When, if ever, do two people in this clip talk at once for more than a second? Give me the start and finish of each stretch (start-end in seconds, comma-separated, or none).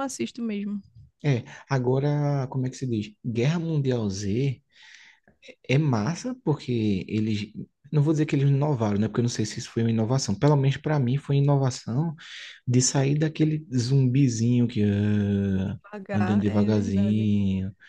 15.6-17.3